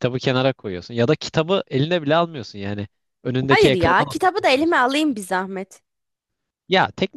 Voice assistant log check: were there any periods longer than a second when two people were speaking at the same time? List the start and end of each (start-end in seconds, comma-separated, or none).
3.5-4.9